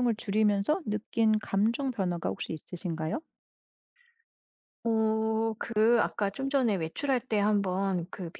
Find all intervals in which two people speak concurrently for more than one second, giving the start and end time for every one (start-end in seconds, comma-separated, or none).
none